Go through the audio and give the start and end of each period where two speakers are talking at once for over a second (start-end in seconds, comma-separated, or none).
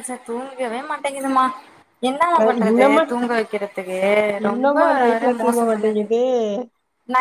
4.5-6.0